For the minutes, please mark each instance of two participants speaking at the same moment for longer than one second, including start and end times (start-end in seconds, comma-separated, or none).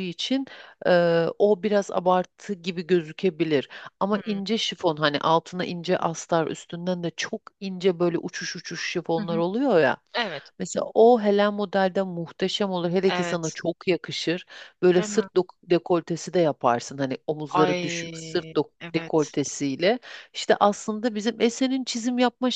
17.5-19.4